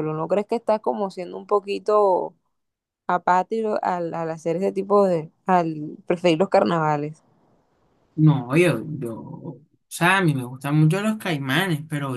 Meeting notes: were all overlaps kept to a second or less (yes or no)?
yes